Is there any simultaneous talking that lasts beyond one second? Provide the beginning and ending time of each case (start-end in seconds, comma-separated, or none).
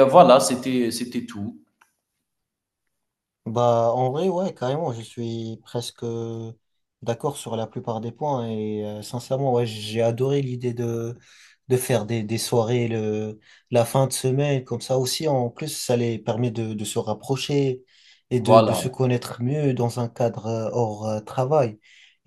none